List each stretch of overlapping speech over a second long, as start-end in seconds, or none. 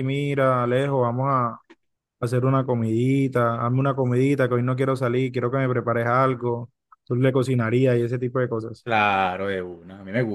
none